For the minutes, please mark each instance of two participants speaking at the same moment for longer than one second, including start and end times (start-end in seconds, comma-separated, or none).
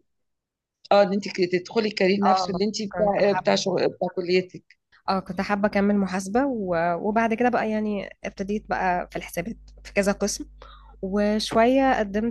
2.2-3.6